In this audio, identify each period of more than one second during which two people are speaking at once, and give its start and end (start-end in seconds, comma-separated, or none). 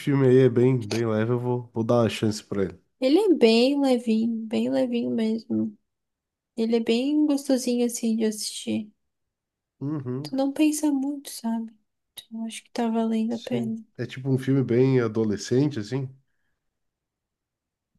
none